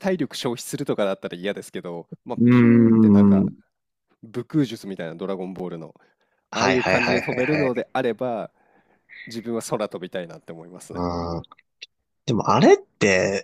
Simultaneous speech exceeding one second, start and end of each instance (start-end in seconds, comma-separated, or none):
6.5-7.8